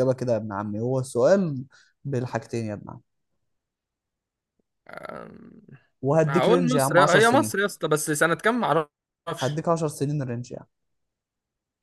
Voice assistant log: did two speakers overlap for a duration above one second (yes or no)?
yes